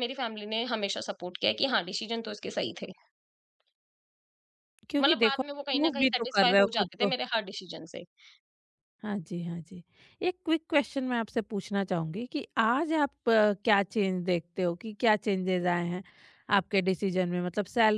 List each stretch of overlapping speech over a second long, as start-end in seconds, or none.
5.0-7.1